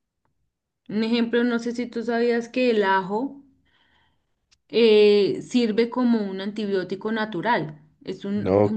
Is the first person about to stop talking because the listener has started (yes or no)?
yes